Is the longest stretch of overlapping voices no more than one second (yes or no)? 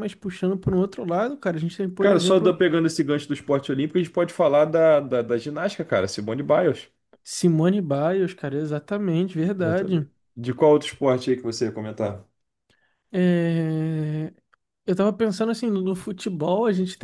yes